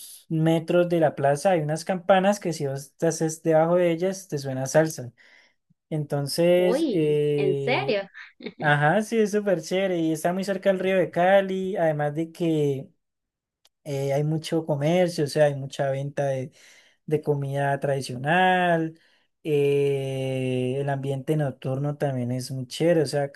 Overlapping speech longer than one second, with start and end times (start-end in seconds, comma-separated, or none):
6.6-8.0